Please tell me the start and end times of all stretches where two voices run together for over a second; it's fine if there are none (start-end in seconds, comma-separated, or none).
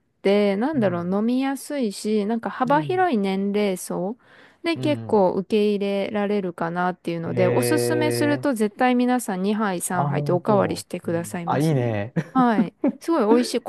9.9-11.9